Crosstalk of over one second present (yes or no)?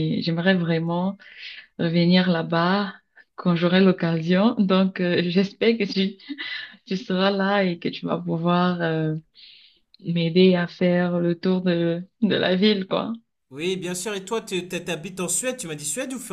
no